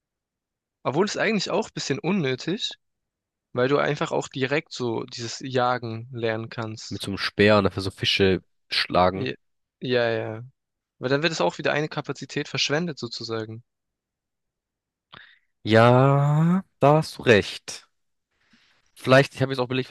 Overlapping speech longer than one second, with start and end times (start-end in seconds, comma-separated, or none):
none